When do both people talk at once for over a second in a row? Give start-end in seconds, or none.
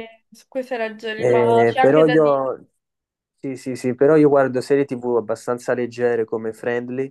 1.2-2.5